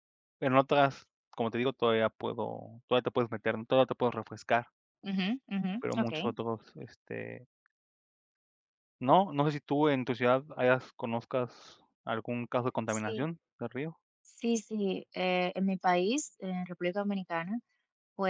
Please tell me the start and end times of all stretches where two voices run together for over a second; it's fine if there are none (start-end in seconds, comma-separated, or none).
none